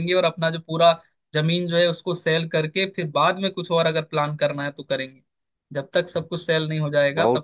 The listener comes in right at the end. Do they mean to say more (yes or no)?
yes